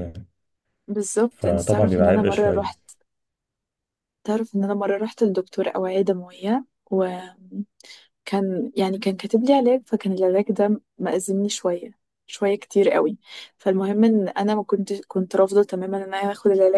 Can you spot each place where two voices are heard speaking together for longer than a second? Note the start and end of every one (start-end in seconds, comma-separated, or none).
1.3-2.7